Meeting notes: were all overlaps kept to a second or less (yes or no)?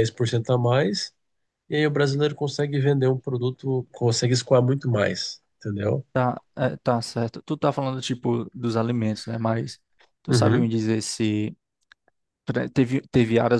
yes